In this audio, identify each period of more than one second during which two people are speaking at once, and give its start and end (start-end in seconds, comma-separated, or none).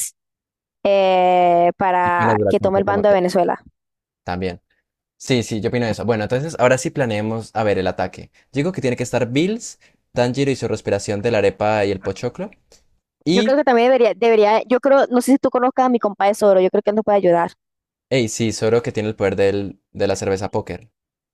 2.0-3.2